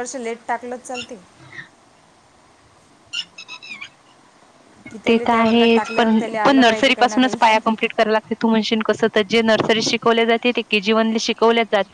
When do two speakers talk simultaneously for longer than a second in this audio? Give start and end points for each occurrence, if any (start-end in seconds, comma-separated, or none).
5.1-7.5